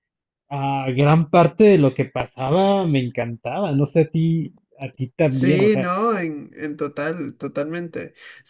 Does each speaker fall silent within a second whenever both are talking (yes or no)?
yes